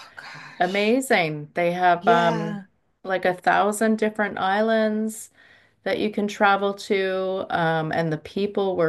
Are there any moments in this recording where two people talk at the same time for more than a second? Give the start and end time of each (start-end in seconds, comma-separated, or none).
none